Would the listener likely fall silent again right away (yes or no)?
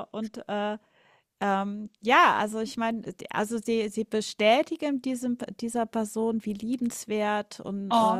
yes